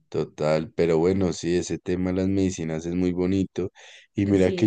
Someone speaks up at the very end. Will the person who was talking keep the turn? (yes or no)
yes